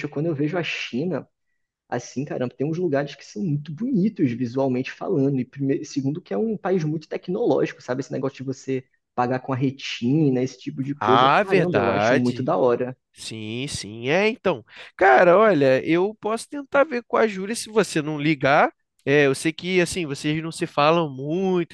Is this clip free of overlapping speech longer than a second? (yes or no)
no